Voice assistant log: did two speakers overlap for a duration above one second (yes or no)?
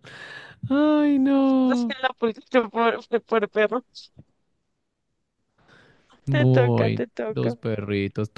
yes